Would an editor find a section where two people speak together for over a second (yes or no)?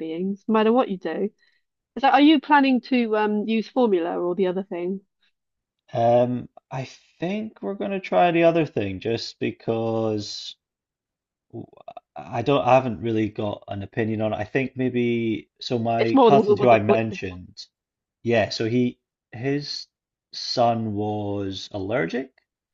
yes